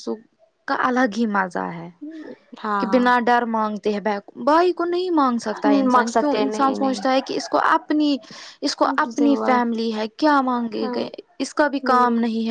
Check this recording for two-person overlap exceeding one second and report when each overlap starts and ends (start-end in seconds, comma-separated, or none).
5.5-7.2